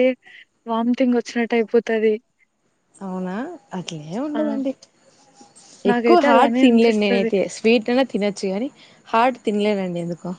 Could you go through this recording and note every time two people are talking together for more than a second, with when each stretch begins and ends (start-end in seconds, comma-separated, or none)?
5.9-7.3